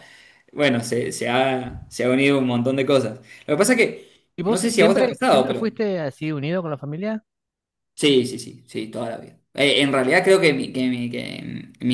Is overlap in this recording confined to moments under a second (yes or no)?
no